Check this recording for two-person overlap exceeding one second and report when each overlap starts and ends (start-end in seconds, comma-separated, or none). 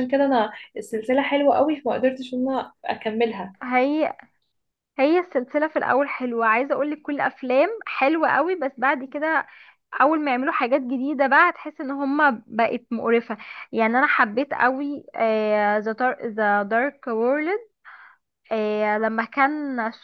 none